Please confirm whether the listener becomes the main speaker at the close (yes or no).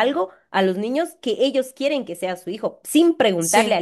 no